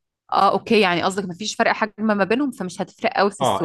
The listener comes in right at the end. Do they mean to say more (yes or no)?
yes